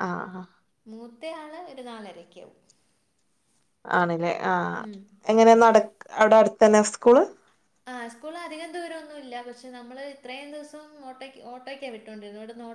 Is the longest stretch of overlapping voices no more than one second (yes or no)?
yes